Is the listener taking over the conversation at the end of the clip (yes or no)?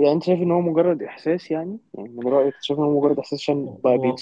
no